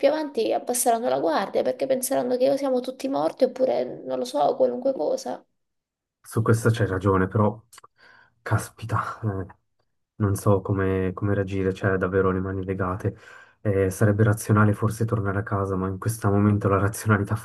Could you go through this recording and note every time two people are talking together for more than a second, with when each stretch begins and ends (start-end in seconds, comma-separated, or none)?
none